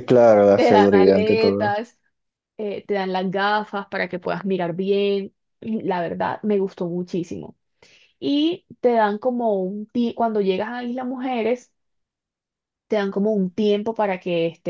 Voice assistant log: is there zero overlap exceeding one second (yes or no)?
no